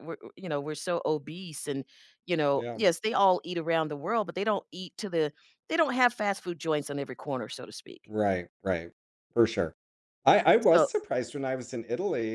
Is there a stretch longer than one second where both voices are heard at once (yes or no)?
no